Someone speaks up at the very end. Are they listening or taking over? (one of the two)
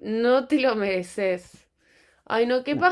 listening